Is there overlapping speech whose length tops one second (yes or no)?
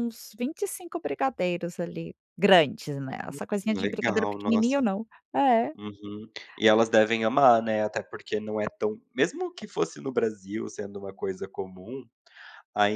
yes